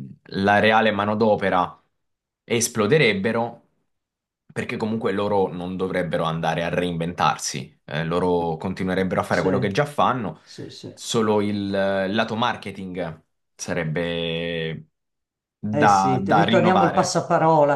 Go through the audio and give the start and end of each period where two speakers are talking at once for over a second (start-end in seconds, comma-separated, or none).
15.7-17.1